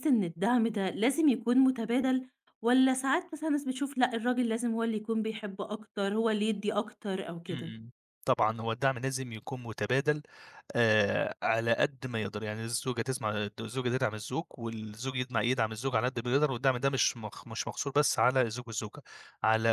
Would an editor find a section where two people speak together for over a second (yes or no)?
no